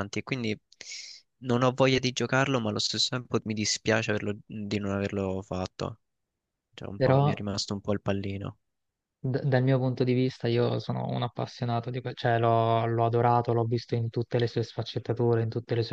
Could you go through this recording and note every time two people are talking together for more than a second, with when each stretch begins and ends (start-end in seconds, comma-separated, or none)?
none